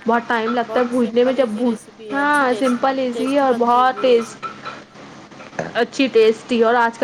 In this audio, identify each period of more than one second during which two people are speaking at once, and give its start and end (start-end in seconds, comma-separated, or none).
0.7-4.4